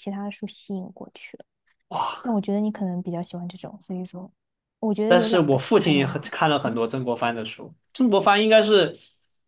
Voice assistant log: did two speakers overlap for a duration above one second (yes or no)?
yes